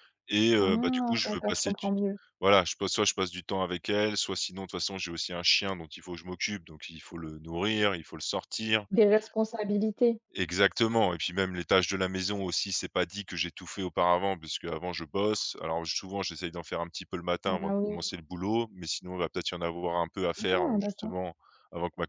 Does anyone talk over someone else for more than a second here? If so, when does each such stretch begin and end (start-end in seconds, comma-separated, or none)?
0.6-1.9